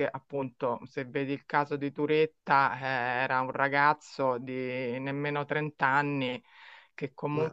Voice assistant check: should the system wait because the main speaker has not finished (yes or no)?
yes